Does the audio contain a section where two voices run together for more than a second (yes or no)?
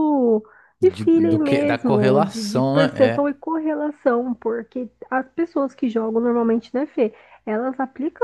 yes